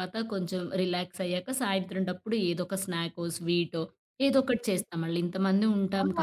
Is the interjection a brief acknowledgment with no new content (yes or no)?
no